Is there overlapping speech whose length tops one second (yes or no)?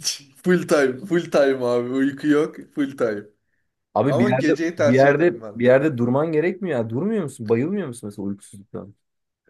yes